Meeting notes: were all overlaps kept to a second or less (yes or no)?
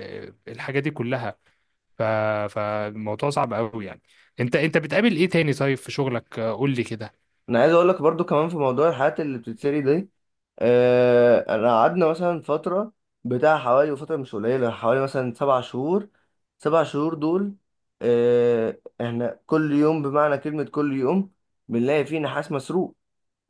yes